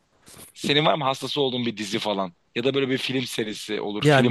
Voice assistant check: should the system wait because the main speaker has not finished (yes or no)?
no